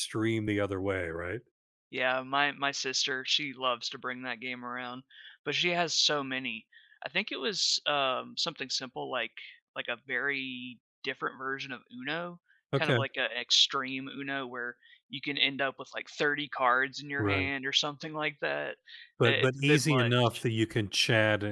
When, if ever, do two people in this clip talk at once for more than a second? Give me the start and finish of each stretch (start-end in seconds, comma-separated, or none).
19.2-20.4